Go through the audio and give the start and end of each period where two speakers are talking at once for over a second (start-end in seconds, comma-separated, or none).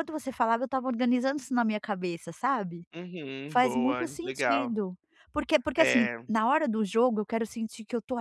3.5-4.8